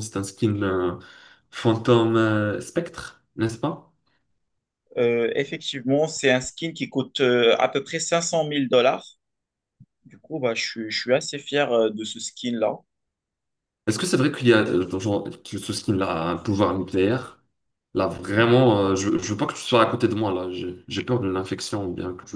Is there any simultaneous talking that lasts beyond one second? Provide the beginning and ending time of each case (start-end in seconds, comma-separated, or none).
none